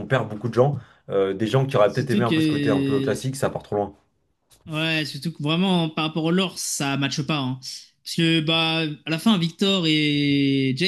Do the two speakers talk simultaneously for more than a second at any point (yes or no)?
yes